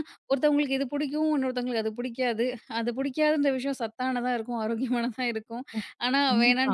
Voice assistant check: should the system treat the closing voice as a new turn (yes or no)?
no